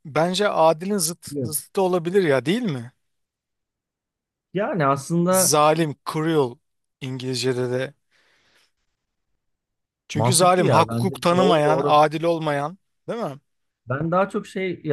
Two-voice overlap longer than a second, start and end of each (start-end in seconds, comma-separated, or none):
10.1-12.0